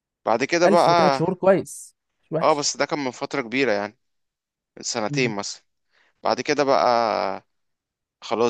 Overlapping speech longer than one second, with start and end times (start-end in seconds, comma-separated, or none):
none